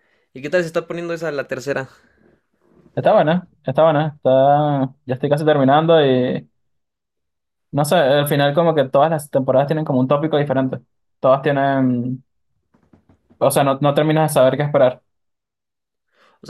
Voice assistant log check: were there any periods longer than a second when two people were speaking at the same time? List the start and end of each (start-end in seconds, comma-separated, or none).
none